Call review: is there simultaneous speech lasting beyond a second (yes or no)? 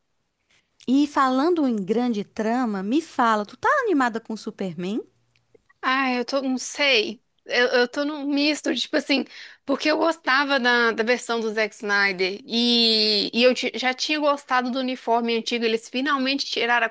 no